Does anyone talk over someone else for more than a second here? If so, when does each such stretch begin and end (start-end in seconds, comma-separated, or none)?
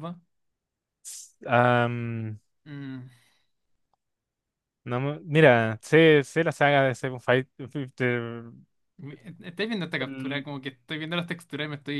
none